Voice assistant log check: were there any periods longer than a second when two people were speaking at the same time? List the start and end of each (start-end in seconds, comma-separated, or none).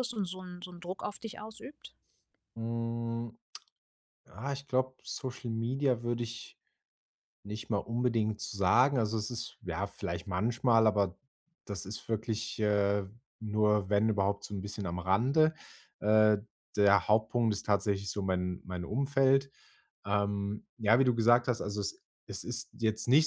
none